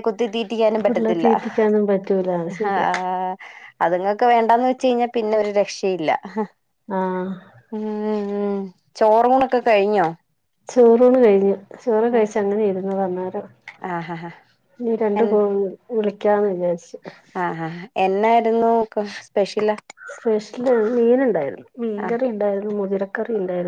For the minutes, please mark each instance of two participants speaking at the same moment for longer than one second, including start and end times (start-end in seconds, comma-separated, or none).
none